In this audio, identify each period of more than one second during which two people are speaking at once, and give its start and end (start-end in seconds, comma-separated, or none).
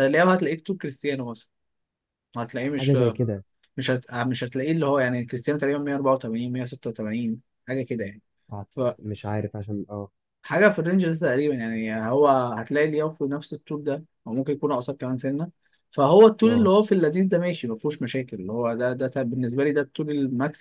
none